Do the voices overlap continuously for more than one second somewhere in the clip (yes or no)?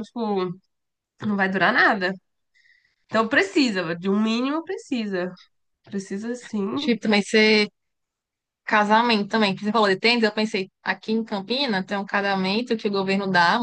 no